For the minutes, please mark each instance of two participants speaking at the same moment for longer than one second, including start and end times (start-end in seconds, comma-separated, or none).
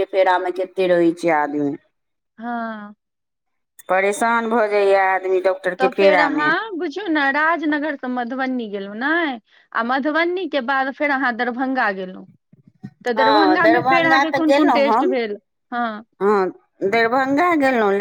13.2-15.1